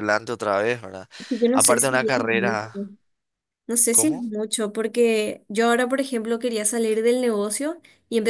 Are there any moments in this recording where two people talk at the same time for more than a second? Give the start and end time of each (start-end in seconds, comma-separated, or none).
1.5-2.8